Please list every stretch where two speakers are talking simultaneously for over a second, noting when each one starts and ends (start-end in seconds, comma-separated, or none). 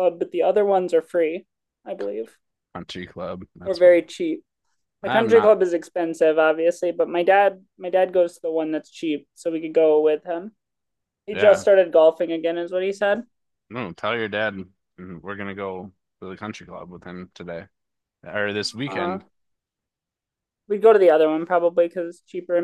none